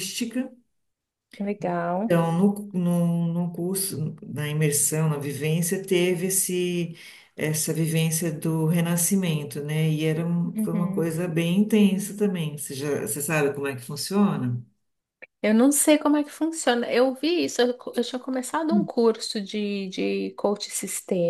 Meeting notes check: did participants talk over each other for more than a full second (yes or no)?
no